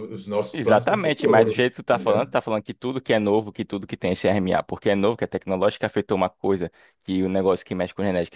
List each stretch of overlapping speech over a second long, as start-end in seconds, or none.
0.6-2.3